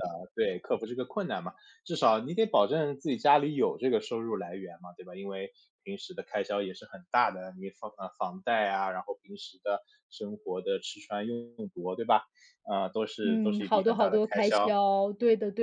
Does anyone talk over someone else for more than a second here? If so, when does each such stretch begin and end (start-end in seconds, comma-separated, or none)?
13.2-14.7